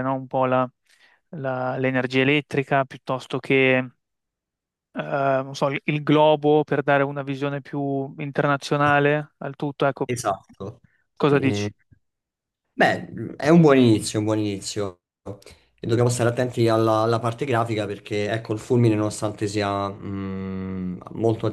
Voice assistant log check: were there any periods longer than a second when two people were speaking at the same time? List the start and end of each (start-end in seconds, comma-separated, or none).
none